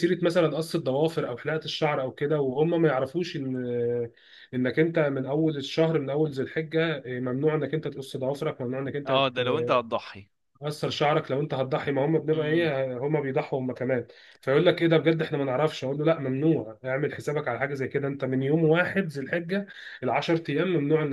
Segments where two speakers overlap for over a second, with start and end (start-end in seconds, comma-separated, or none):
none